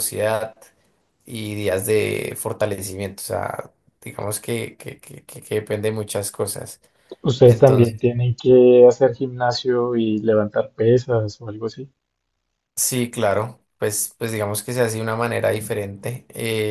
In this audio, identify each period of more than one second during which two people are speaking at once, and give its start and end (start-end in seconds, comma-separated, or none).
none